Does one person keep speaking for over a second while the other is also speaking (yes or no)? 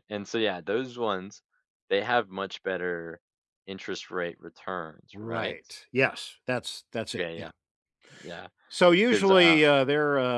no